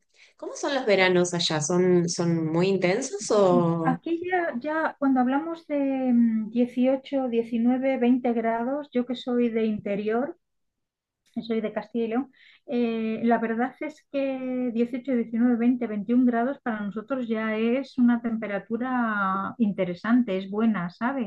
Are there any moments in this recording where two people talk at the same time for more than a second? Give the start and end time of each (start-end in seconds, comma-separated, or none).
none